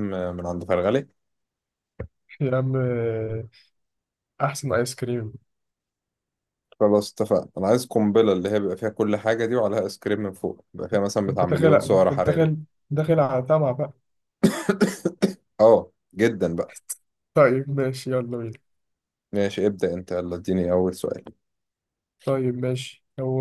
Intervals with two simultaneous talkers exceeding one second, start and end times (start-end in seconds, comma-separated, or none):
11.3-12.5